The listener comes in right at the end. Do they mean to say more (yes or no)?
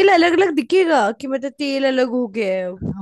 yes